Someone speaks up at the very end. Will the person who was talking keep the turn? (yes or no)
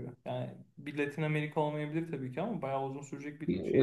no